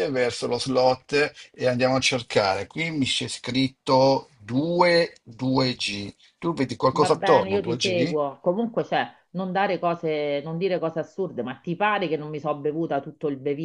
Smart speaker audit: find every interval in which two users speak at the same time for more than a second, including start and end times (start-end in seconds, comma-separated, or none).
6.9-8.2